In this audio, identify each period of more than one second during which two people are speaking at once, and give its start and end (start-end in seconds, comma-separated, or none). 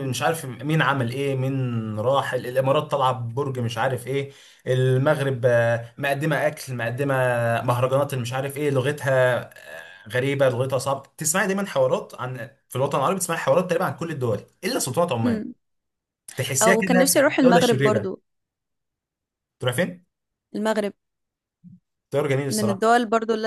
16.6-18.1